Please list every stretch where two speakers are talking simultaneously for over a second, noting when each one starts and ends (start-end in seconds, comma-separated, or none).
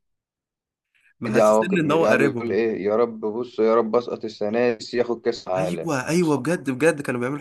1.3-2.6